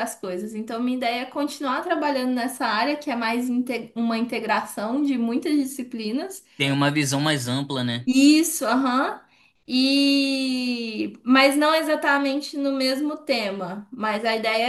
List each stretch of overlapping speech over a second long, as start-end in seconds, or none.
none